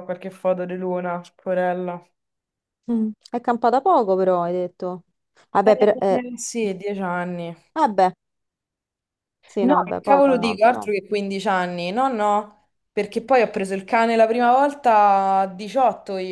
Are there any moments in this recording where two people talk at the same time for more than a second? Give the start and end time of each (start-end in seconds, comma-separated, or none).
9.6-10.8